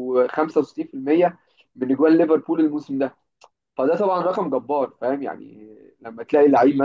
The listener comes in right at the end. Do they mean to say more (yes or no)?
no